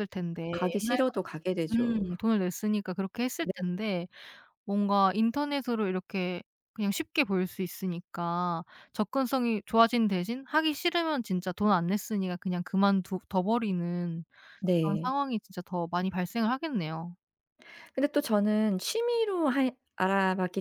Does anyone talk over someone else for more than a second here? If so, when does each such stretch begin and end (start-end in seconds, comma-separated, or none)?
0.5-2.1